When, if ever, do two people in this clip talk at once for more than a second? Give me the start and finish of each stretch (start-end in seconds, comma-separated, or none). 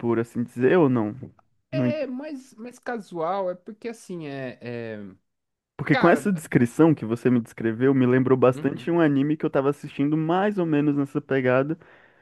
none